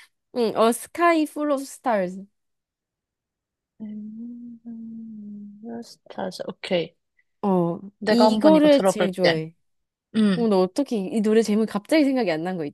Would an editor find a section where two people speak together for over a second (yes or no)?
yes